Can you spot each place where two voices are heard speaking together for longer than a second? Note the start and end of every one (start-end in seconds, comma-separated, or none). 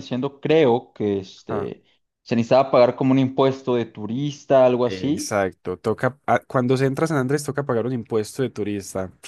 none